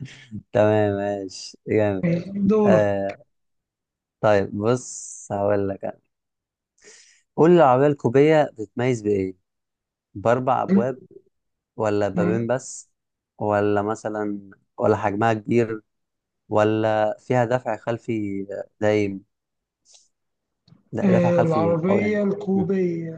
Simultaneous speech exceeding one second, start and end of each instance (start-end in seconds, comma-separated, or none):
21.0-22.6